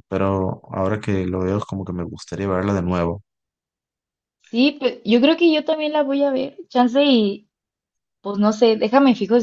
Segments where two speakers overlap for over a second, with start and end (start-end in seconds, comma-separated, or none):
none